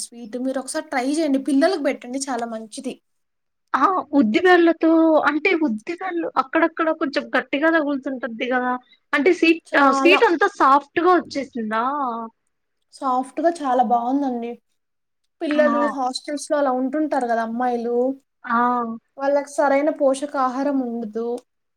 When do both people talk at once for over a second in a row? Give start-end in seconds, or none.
none